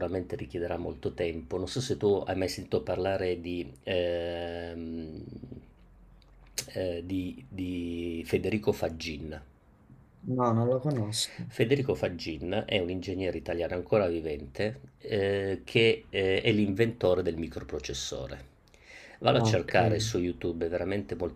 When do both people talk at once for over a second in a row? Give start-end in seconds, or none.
none